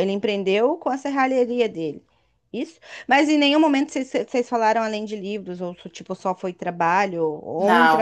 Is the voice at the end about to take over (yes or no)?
yes